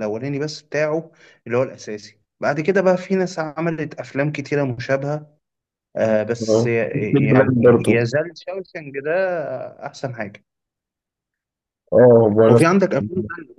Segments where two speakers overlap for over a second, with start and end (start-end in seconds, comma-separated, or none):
6.5-8.1